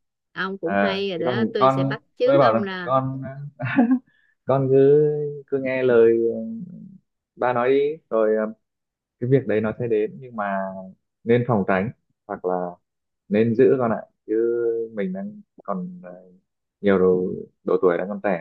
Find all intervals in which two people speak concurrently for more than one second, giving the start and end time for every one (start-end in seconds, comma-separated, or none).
0.6-2.9